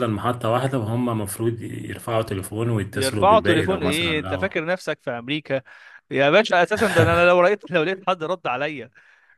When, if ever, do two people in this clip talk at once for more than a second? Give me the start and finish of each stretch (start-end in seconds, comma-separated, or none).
2.9-4.5